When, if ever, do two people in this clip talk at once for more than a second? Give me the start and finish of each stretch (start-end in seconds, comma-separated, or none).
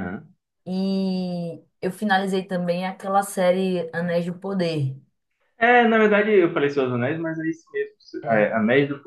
none